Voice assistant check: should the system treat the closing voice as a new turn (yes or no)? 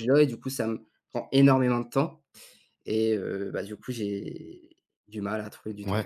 yes